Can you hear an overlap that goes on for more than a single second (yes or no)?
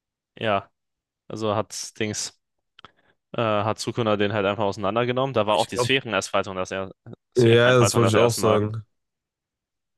yes